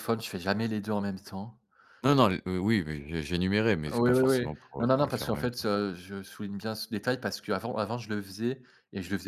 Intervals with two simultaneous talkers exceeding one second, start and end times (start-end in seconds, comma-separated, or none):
3.9-5.7